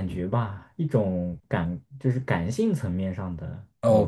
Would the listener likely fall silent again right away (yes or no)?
no